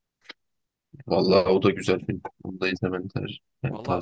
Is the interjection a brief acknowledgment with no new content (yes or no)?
no